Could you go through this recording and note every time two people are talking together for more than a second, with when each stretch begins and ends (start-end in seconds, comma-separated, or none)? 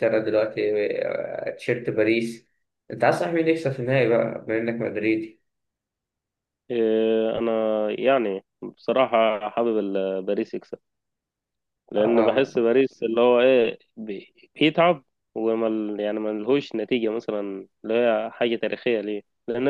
none